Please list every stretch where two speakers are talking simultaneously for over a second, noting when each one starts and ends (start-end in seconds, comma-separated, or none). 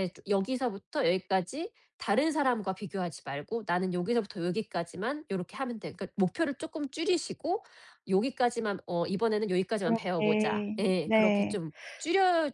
9.8-11.6